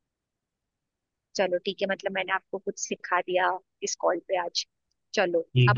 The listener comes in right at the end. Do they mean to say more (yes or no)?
yes